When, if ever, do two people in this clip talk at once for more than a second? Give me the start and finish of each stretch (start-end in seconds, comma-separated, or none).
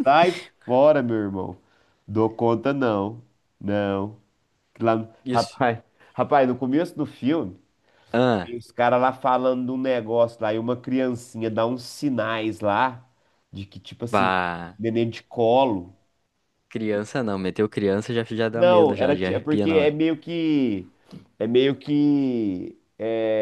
18.5-19.9